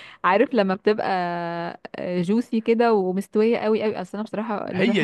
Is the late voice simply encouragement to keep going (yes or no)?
no